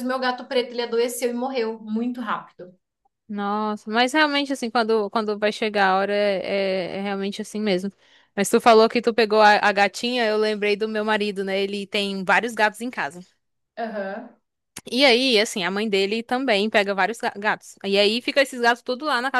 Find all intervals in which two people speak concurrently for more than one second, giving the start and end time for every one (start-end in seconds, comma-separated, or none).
none